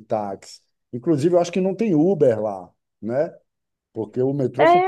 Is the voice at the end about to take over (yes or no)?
yes